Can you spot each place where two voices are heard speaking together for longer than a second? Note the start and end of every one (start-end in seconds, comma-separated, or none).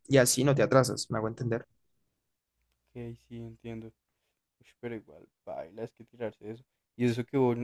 none